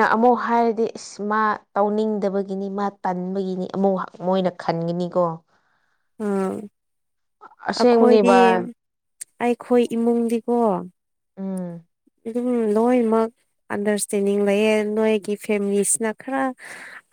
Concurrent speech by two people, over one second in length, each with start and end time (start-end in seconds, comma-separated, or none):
none